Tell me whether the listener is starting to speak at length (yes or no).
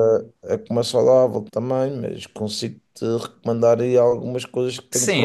yes